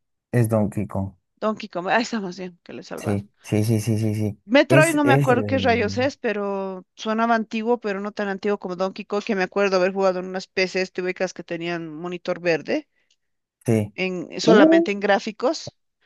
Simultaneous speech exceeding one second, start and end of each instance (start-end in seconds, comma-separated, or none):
4.5-6.1